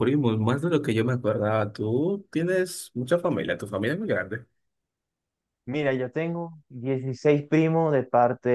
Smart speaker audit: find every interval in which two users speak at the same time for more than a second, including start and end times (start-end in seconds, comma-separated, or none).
none